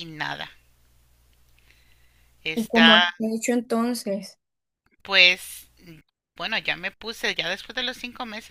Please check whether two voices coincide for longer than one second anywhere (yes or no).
no